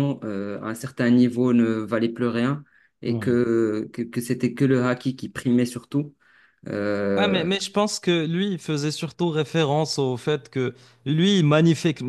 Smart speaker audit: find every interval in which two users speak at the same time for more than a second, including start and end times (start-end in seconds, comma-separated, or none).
none